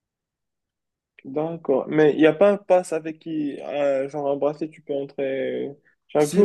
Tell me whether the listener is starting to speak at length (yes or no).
yes